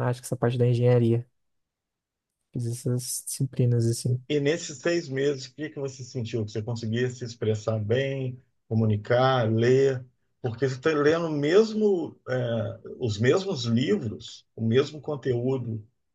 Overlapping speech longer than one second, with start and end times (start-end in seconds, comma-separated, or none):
none